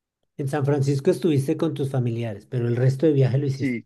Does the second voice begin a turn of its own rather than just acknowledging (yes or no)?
yes